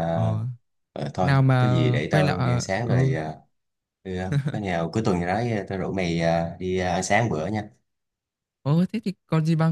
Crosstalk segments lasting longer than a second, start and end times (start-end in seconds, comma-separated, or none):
1.2-3.1